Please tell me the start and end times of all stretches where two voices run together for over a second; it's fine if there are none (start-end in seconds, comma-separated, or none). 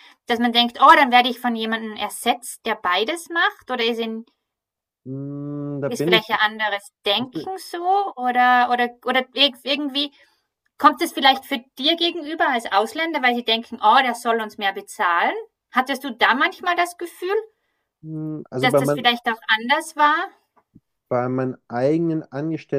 none